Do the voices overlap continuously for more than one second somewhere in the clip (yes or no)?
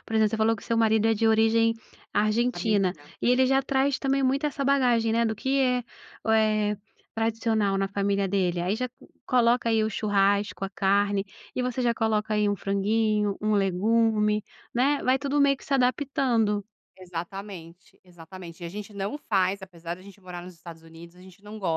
no